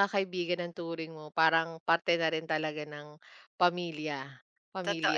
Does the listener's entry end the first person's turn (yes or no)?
yes